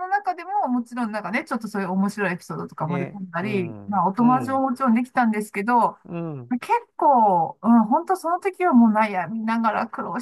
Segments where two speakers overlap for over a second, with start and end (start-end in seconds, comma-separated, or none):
2.8-4.7